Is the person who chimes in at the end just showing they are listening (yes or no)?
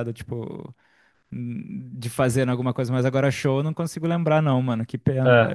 no